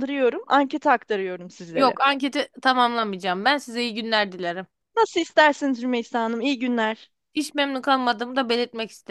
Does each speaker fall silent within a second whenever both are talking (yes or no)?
yes